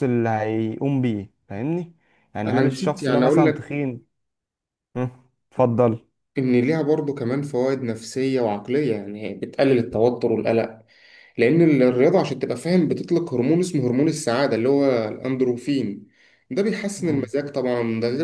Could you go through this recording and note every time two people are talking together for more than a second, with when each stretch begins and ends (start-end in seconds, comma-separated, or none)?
2.5-3.7